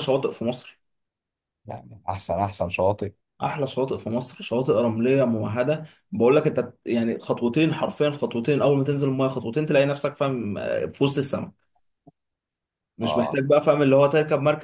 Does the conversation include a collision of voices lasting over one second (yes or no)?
no